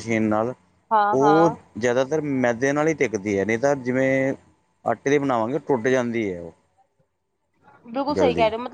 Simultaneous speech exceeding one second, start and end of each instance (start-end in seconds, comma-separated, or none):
none